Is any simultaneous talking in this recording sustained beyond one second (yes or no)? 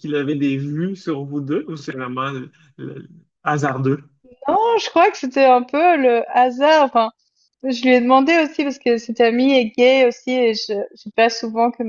no